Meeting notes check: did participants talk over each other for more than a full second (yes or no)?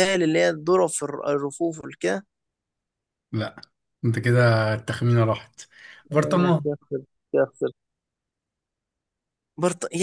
no